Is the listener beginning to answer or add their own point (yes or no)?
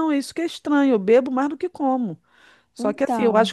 no